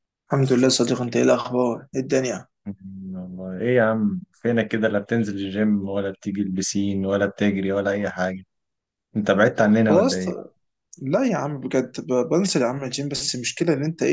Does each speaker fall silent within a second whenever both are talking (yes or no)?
yes